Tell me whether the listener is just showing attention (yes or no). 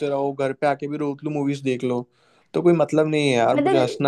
no